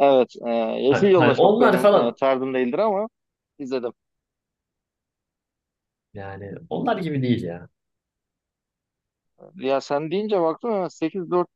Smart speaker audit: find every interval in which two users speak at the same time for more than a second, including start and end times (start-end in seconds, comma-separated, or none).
0.9-2.2